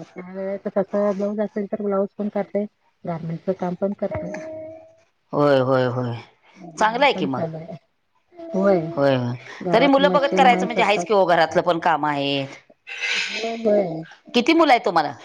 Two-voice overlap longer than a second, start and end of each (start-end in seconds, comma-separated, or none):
9.7-11.2